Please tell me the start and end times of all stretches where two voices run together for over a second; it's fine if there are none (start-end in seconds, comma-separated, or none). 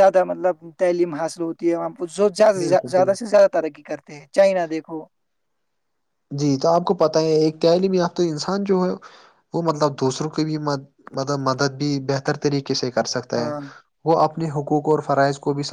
none